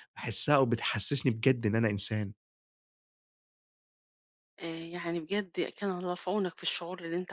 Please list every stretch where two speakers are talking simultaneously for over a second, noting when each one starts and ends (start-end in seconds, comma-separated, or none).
none